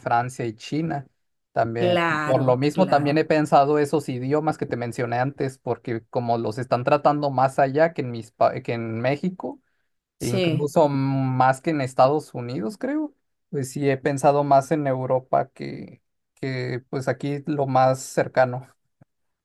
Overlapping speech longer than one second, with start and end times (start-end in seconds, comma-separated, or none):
1.8-3.2